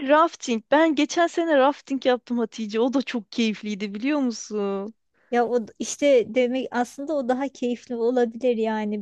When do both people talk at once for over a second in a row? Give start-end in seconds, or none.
none